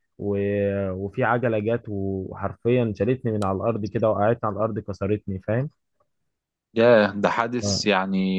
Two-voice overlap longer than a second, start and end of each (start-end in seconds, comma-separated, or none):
none